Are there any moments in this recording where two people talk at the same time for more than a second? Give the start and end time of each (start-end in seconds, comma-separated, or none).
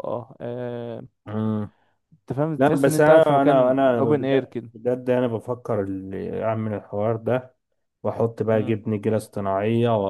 2.6-4.7